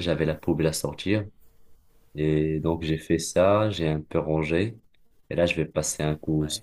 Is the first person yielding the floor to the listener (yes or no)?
no